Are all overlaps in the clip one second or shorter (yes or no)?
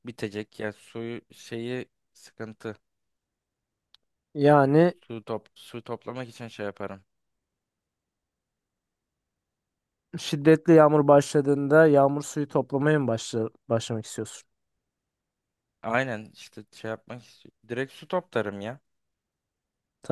yes